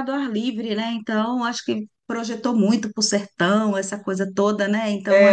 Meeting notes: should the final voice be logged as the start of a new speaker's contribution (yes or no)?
yes